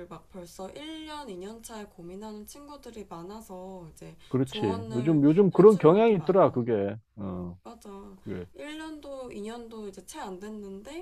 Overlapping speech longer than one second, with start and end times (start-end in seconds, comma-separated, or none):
4.3-6.6